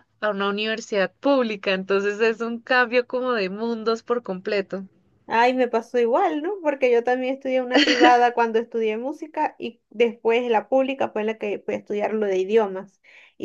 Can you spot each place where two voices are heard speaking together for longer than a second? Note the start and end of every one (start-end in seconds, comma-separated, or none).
none